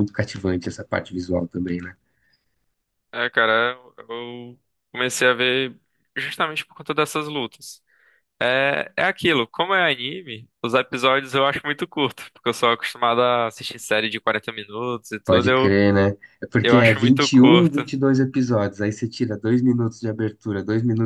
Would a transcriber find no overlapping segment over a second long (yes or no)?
no